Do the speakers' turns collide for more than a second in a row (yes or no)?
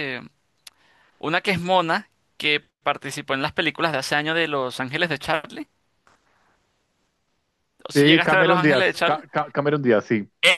yes